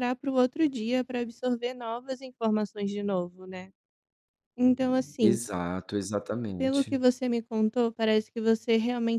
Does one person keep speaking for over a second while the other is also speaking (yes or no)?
no